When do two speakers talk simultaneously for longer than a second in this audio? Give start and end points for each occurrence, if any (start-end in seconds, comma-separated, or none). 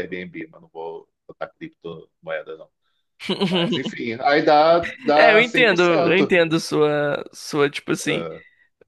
5.2-6.3